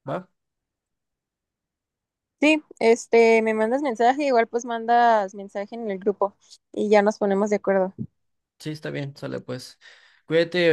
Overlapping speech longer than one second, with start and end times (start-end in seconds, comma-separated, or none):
none